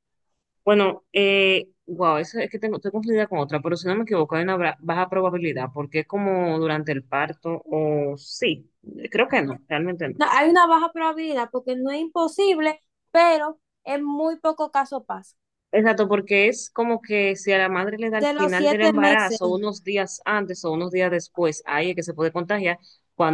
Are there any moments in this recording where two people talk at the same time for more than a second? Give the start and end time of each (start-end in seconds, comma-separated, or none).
18.1-19.4